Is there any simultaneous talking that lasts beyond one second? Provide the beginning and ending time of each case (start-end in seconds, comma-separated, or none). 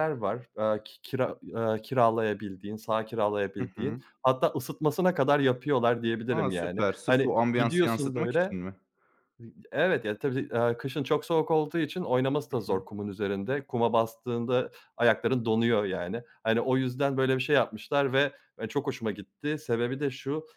6.3-8.6